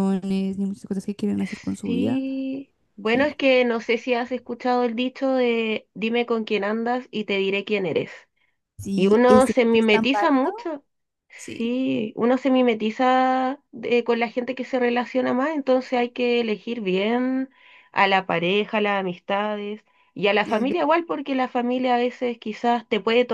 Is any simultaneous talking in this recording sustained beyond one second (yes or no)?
yes